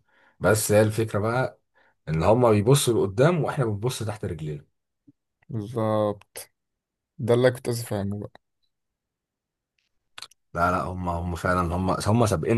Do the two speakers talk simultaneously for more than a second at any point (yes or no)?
no